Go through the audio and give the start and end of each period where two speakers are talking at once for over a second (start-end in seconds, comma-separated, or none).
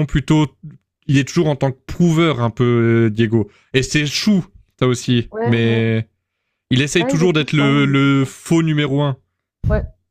7.0-8.3